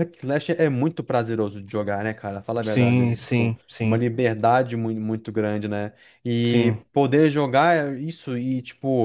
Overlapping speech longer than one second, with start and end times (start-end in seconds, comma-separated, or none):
2.6-4.0